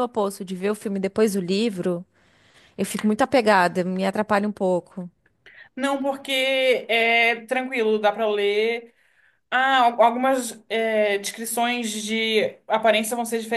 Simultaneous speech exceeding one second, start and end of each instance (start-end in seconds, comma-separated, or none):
none